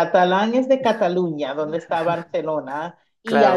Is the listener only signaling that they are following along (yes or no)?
no